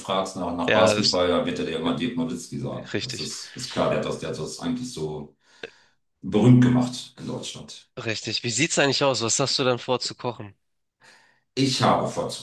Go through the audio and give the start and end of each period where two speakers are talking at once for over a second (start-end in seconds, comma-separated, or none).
none